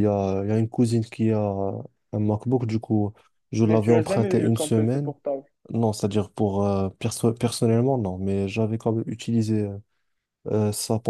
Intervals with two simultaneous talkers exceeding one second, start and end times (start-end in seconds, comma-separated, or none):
3.6-5.1